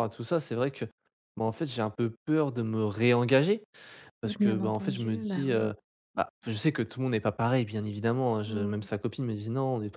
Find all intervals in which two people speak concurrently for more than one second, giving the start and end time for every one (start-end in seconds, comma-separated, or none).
4.4-5.7